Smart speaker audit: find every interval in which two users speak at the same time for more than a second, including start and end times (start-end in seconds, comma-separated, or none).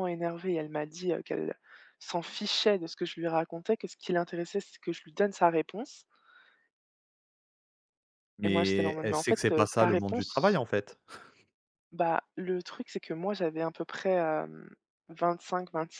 8.4-10.6